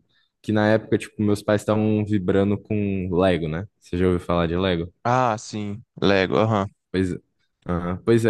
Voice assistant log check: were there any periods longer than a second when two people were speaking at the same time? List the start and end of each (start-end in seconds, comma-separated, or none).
none